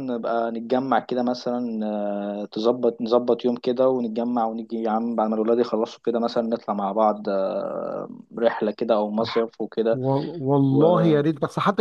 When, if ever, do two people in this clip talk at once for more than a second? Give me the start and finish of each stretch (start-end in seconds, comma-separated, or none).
none